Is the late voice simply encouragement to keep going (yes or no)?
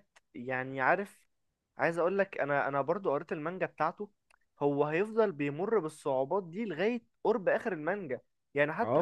yes